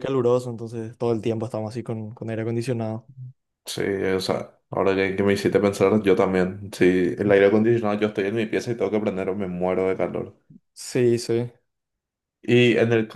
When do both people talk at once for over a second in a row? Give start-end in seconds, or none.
none